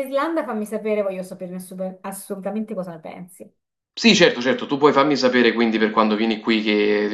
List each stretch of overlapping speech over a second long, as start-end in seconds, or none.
none